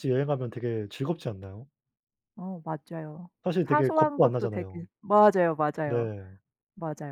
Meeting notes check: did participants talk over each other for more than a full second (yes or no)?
yes